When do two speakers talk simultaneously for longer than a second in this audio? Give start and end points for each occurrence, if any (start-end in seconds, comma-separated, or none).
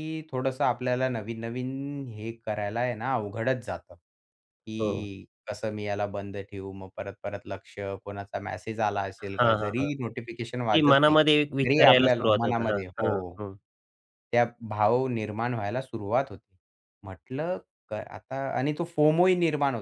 10.7-13.1